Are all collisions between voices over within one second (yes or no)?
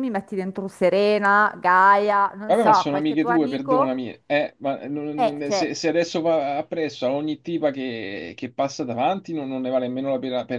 no